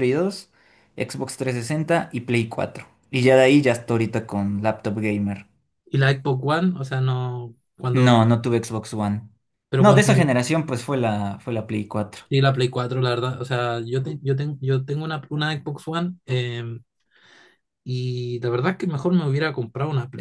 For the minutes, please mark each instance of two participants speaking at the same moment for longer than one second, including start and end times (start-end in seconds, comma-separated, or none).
none